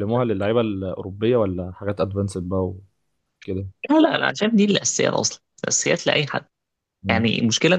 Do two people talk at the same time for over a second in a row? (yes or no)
no